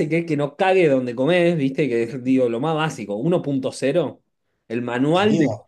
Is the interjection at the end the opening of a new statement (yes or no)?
no